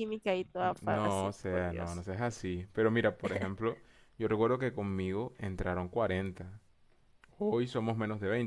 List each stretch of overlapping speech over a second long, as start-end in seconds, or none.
0.8-2.0